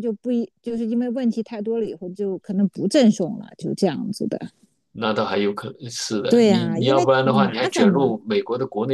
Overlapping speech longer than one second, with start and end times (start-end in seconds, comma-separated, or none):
6.3-8.2